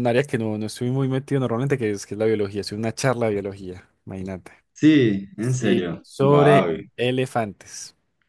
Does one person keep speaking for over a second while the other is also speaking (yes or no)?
yes